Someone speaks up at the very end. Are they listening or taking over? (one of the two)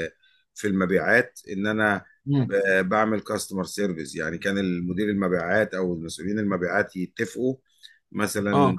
listening